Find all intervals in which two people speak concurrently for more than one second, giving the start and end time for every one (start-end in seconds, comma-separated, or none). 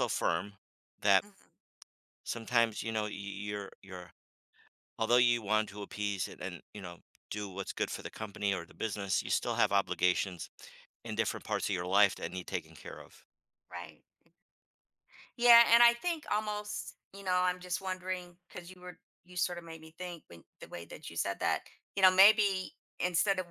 none